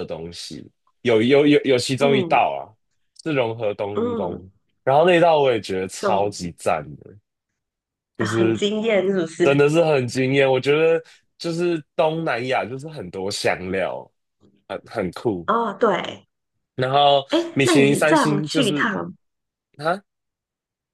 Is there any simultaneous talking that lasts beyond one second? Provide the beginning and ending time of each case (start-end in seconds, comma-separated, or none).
17.3-18.9